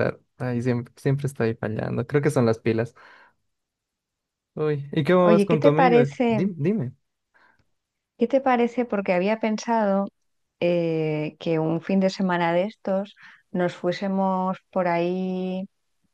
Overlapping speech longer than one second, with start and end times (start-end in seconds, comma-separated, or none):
5.2-6.4